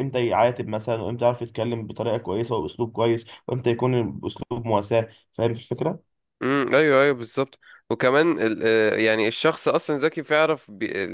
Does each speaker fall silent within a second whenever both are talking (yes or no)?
yes